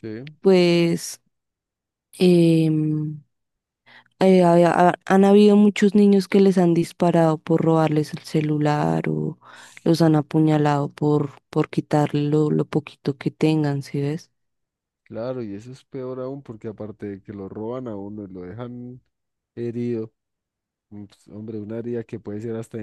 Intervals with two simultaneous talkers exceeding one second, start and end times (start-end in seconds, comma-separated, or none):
none